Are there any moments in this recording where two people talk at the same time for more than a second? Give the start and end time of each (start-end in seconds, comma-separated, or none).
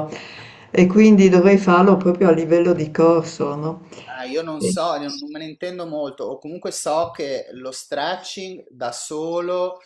none